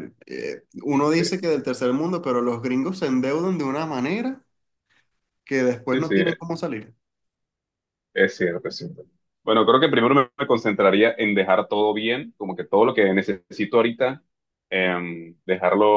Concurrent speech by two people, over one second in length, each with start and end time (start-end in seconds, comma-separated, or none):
none